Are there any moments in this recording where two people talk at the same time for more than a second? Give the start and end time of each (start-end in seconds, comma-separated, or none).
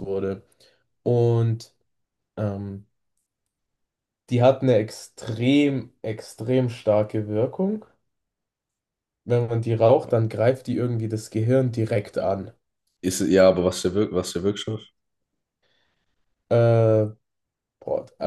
none